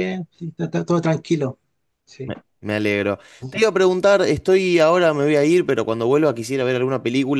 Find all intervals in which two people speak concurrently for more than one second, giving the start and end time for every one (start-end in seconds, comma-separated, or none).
none